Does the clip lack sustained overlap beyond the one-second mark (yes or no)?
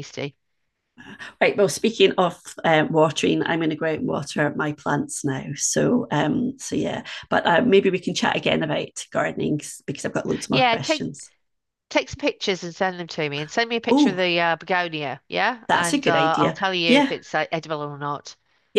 no